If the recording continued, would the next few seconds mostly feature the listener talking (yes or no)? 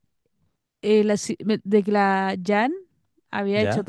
no